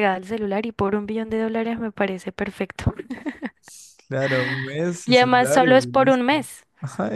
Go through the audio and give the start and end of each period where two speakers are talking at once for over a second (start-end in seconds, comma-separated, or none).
5.0-6.3